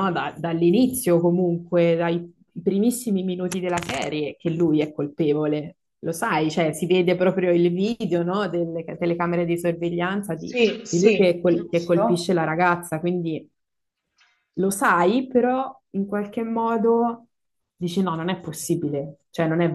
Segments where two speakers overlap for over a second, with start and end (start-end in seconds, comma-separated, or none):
10.3-12.3